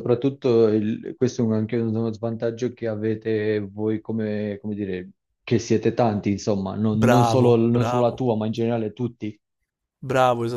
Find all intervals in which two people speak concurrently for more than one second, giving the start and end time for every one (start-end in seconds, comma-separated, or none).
6.9-8.2